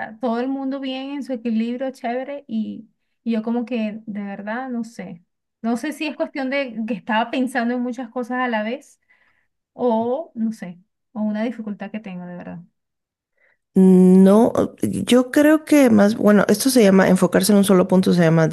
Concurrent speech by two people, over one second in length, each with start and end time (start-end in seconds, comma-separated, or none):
none